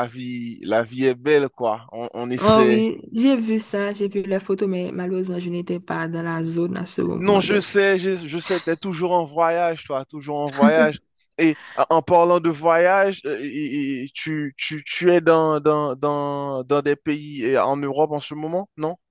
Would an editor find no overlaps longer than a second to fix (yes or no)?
yes